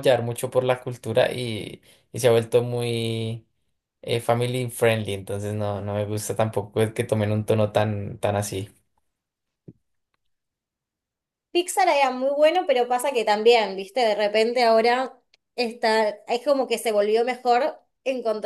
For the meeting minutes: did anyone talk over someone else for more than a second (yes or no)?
no